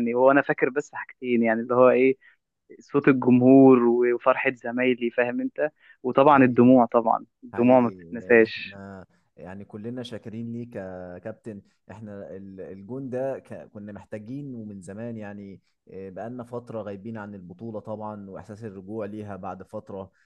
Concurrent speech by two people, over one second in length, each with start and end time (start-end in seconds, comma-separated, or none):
7.5-8.8